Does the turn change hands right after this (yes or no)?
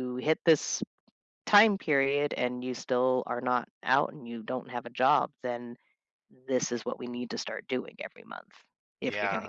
yes